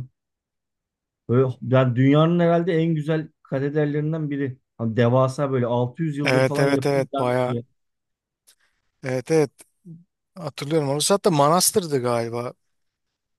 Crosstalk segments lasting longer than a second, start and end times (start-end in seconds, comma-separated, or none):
6.2-7.6